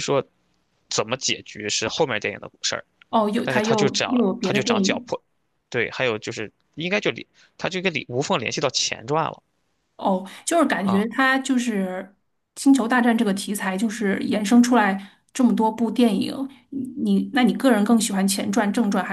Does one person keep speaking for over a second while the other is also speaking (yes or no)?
yes